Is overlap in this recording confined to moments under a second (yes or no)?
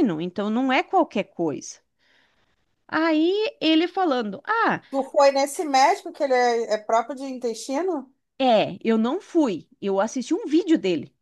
yes